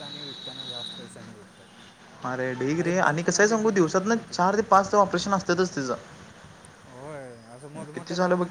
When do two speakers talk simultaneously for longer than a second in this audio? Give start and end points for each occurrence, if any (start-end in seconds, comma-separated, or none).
2.8-4.5